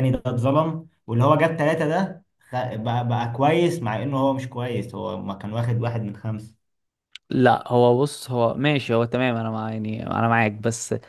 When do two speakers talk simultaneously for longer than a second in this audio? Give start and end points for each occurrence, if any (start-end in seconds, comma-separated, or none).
none